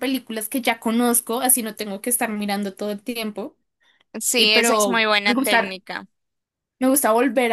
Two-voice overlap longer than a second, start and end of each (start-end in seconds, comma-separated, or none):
4.4-5.7